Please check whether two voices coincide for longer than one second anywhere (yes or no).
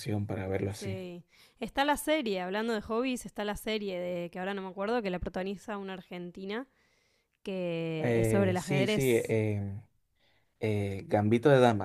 yes